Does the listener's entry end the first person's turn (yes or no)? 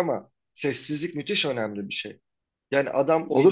yes